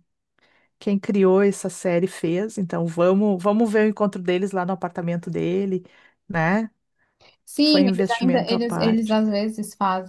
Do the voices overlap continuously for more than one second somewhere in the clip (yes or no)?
yes